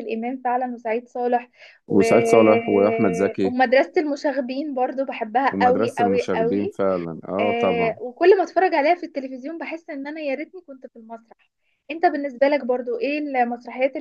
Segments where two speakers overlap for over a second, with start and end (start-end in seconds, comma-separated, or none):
5.5-6.8